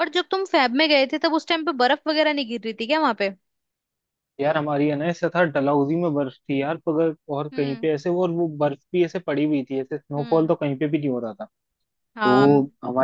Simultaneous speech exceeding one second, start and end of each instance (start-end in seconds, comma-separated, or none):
none